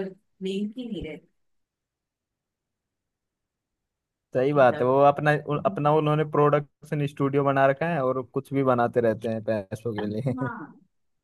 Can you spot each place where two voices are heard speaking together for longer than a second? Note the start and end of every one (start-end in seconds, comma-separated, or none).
none